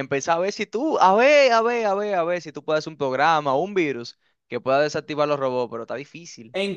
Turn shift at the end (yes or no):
yes